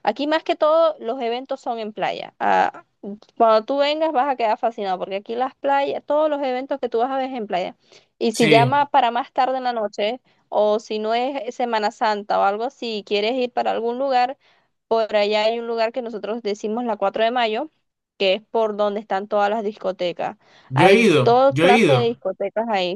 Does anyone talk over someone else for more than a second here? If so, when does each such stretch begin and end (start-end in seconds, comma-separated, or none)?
20.7-22.1